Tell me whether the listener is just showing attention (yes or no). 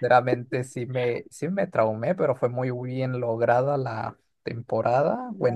no